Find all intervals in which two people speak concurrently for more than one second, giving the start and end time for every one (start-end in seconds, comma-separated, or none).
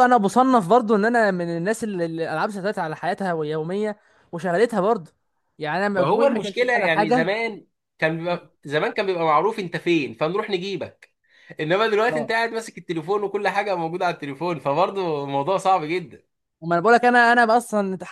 6.0-7.3